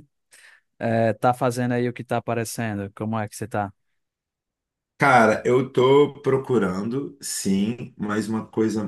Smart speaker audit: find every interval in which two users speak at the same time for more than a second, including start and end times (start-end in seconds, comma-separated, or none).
none